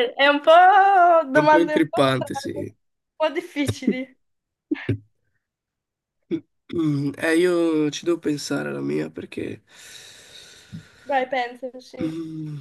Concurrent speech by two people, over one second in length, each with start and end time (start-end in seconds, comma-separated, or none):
1.3-2.7